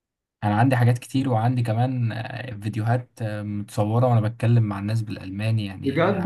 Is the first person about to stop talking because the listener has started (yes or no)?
yes